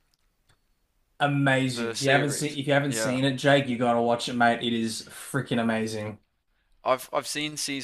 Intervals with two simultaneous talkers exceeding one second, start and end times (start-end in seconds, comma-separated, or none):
1.7-3.2